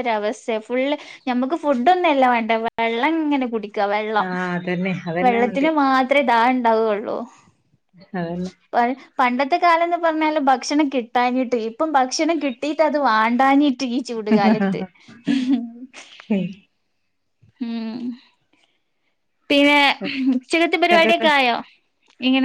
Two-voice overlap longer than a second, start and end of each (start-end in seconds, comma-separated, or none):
none